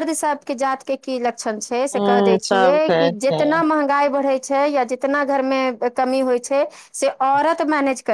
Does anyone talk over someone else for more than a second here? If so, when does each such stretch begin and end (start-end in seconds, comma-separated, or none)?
1.8-3.5